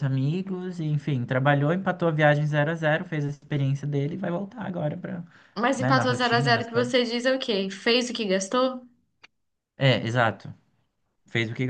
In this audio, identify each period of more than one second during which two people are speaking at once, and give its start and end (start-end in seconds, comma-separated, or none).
5.8-7.0